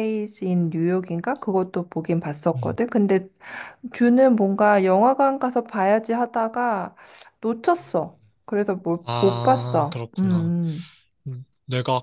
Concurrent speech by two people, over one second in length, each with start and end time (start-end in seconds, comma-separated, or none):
9.0-10.5